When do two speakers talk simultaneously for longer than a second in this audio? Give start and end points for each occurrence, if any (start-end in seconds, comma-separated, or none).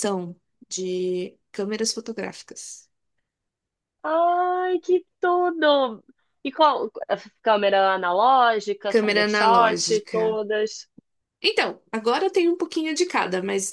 8.9-10.4